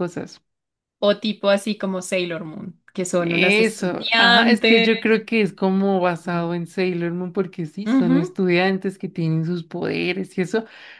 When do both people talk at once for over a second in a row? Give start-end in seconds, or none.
3.2-4.9